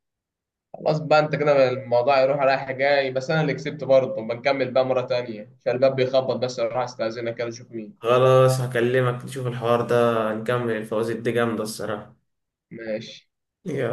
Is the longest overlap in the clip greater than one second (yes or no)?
no